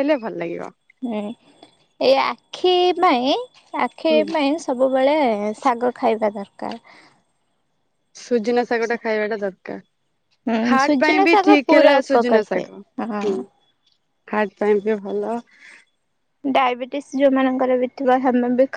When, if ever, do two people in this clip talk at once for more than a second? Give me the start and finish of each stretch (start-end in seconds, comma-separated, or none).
10.7-12.6